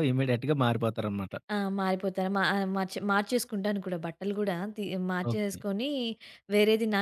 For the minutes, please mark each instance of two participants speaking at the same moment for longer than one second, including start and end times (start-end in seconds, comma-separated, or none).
none